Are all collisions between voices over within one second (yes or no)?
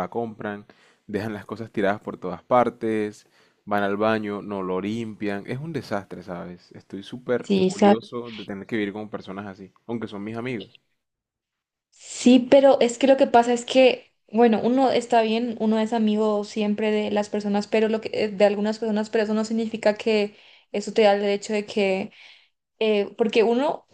yes